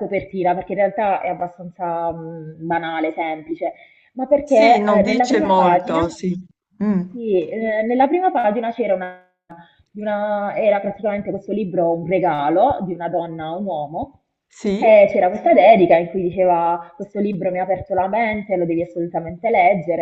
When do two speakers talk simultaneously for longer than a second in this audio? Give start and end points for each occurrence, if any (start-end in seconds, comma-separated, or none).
4.4-6.0